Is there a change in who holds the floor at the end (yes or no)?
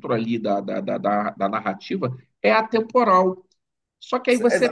yes